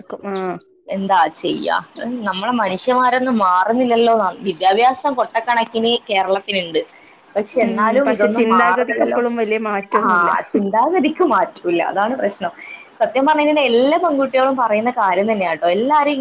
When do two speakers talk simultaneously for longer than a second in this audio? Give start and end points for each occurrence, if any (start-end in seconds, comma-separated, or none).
7.6-9.2